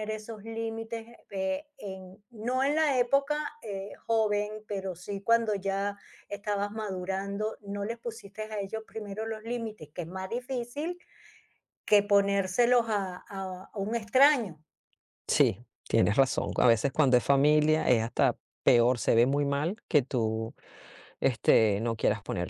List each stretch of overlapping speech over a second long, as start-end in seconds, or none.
none